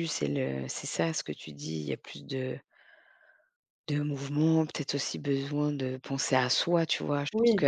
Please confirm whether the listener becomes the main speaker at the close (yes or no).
no